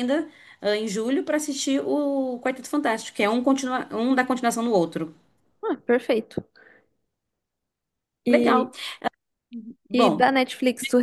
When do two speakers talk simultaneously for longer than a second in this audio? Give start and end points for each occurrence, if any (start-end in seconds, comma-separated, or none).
none